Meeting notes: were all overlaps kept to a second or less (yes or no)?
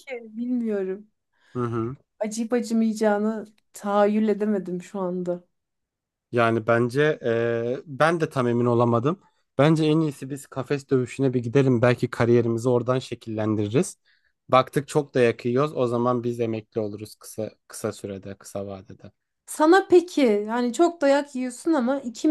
yes